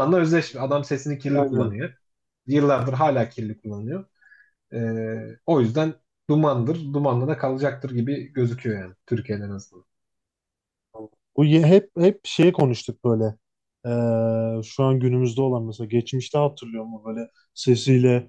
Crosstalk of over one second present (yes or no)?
no